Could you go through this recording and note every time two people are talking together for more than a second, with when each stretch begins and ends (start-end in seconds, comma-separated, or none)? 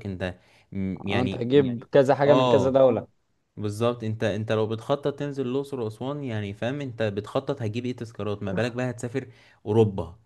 none